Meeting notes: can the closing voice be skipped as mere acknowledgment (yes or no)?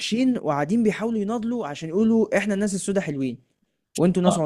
no